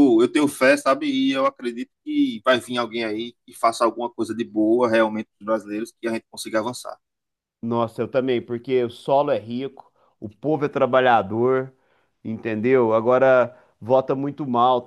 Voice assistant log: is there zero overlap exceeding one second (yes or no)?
yes